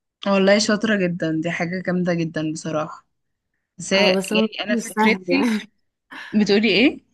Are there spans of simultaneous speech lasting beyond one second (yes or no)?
yes